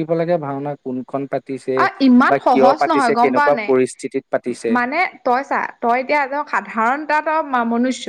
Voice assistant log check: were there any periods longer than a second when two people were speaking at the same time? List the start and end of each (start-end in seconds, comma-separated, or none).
none